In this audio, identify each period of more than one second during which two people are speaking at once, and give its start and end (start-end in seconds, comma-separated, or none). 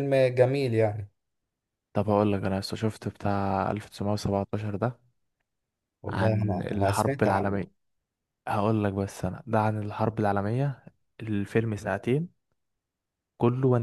6.1-7.6